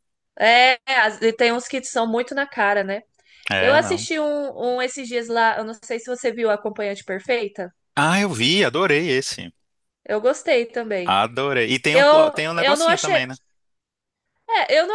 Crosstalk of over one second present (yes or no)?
yes